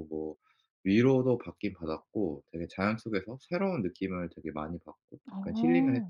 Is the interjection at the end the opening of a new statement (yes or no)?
yes